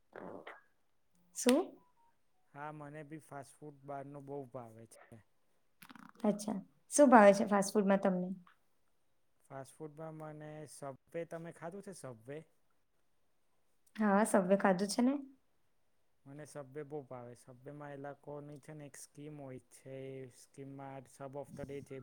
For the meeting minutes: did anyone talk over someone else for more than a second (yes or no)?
no